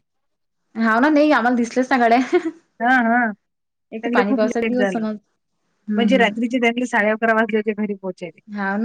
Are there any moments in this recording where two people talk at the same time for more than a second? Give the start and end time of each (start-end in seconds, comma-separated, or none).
none